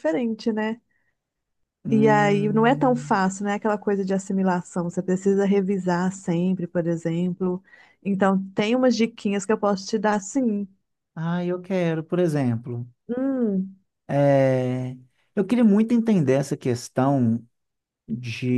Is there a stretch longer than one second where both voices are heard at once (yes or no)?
yes